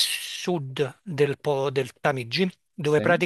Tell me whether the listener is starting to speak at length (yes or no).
no